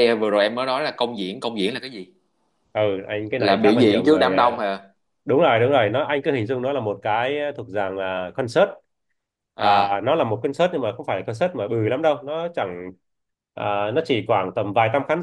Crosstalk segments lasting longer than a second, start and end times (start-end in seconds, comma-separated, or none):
3.4-4.6